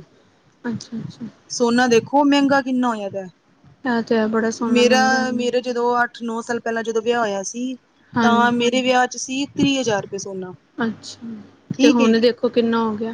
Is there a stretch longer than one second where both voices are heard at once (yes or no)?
no